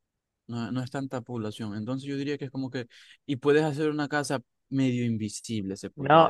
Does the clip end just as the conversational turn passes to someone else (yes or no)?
yes